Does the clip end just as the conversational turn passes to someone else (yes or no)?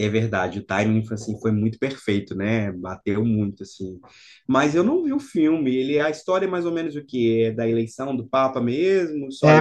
yes